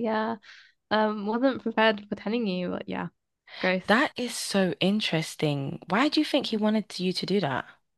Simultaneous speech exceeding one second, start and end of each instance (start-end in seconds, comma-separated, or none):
none